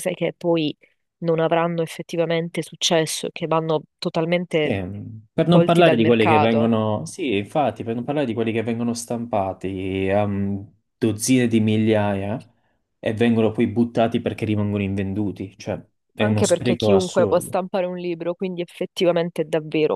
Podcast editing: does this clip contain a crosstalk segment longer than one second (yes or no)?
yes